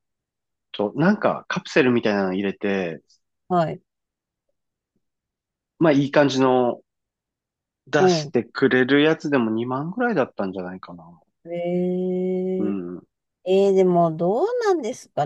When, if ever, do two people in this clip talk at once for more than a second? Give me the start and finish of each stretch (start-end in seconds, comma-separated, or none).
none